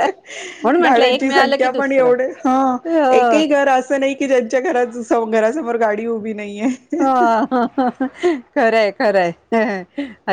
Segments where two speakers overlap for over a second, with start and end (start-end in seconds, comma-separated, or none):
0.8-2.1